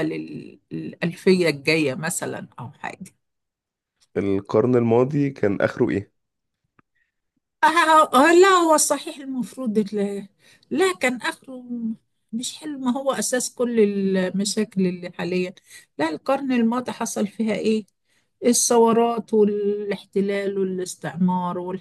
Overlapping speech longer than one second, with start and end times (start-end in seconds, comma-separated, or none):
none